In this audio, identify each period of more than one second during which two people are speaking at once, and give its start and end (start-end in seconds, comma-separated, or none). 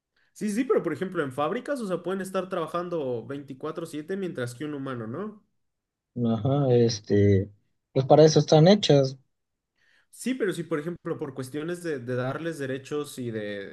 none